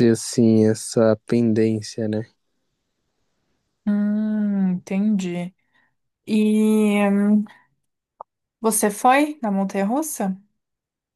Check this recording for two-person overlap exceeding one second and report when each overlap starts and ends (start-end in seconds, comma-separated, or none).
none